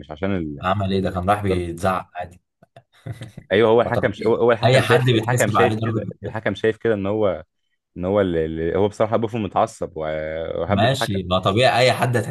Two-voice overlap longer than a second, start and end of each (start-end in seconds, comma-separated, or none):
3.8-6.3